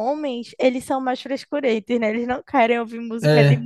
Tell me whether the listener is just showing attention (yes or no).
yes